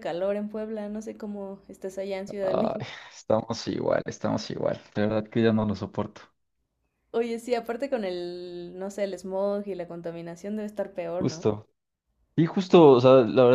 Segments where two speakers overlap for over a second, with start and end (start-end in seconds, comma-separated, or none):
none